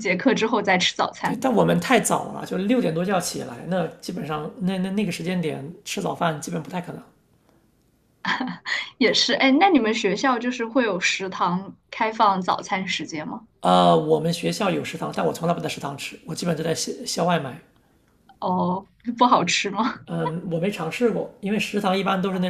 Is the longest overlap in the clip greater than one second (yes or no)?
no